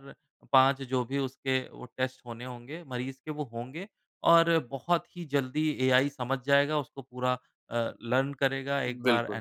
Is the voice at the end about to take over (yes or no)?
no